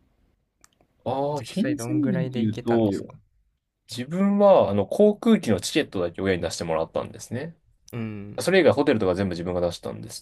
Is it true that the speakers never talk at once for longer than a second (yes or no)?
no